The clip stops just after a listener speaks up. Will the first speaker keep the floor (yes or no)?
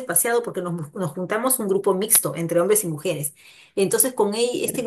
yes